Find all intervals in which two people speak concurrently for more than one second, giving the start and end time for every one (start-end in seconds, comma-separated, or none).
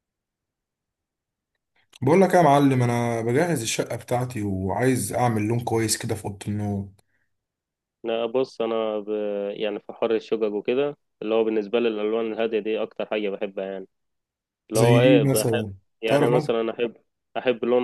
14.8-16.5